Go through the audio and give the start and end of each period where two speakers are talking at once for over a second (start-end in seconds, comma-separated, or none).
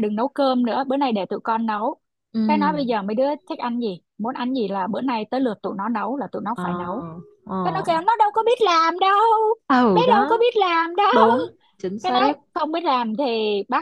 none